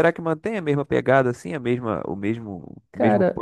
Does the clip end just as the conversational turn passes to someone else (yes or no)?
yes